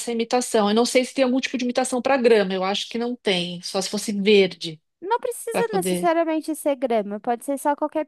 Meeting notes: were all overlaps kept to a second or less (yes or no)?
yes